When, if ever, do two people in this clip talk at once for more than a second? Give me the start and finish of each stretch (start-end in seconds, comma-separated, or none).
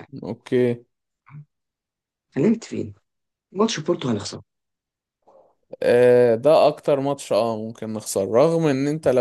none